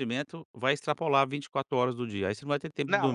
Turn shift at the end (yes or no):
yes